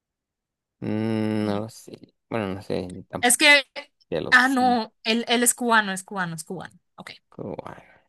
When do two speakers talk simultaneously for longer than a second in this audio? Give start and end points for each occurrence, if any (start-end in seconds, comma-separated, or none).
none